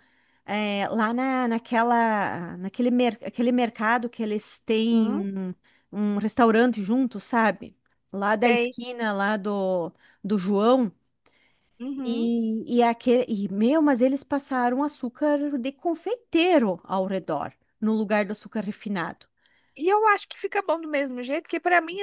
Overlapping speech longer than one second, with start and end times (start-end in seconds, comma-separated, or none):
none